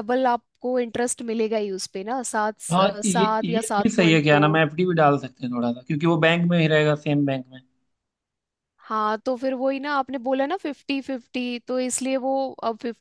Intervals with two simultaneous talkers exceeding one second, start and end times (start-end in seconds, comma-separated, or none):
2.7-4.6